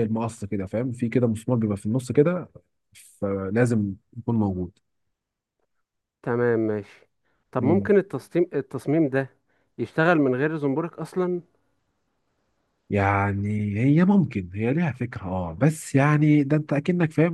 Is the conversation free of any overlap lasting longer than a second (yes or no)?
yes